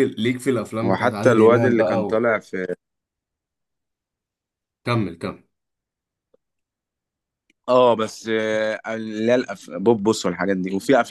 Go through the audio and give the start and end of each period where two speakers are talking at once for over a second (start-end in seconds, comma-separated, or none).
0.8-2.3